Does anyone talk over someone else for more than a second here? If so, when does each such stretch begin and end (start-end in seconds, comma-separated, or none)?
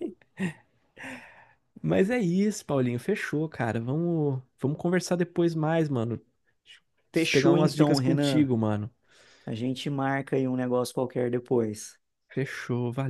7.2-8.5